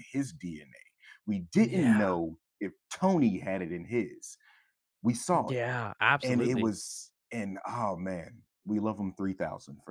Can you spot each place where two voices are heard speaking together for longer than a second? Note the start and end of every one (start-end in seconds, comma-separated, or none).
none